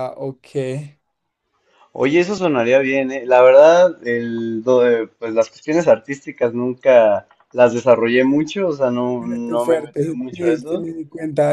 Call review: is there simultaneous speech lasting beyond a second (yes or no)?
yes